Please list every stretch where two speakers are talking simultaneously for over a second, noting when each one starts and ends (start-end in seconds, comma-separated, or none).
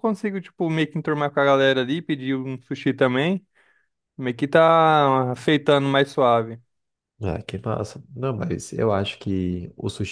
none